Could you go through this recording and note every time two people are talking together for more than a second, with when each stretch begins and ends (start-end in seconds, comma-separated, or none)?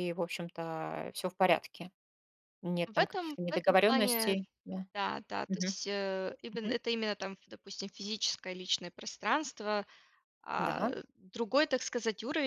2.9-4.5